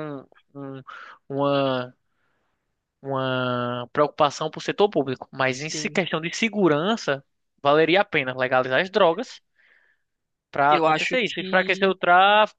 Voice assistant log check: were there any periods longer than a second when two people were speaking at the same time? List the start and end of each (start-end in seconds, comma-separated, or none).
10.7-11.9